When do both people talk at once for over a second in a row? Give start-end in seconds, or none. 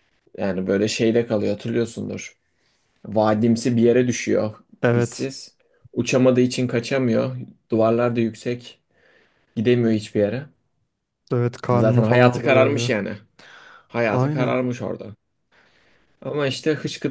11.7-12.9